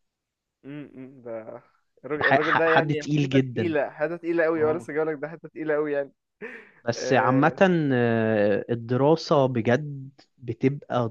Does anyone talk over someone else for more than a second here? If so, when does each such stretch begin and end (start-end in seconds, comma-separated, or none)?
2.2-3.7